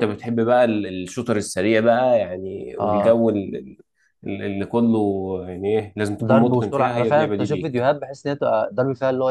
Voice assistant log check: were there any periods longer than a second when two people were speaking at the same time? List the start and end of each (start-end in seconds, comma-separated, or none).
6.2-7.9